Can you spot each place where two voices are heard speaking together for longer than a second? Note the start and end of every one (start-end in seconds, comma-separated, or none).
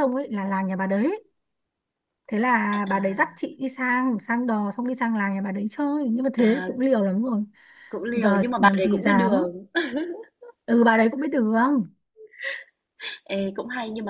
8.1-9.5